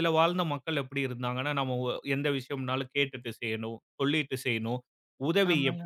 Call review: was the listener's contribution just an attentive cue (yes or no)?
yes